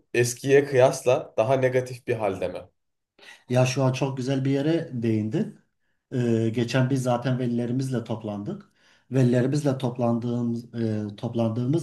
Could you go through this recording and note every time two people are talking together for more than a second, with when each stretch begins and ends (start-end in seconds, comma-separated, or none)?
none